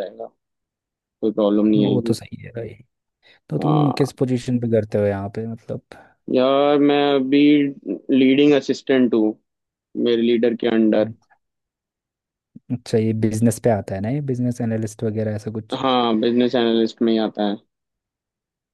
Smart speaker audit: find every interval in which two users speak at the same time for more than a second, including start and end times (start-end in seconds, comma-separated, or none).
none